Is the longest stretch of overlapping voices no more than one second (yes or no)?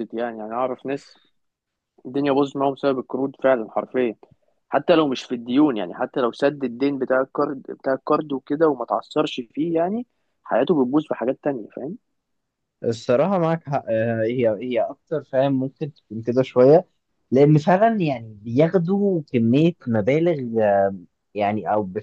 yes